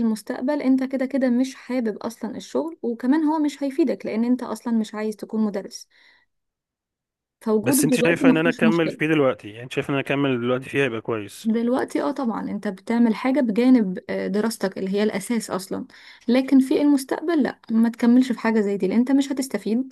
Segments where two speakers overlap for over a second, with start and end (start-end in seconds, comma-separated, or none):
7.6-9.0